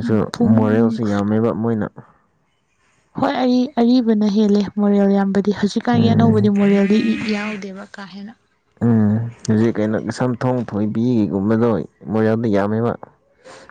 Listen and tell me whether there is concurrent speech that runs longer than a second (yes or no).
no